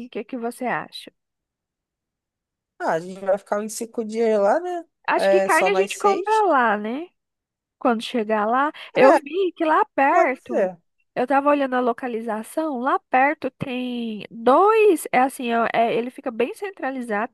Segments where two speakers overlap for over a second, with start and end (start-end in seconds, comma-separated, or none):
5.1-6.4